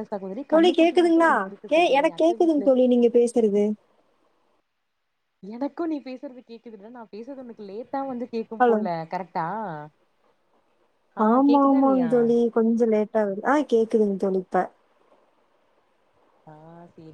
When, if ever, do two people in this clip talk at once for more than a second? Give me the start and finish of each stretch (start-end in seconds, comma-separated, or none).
none